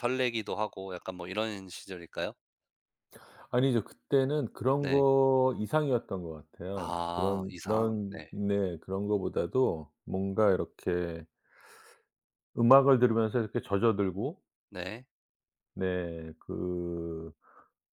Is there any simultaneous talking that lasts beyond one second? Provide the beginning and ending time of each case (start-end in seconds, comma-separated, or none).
6.7-8.3